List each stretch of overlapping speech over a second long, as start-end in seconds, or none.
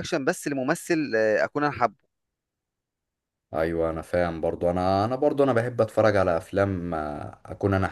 none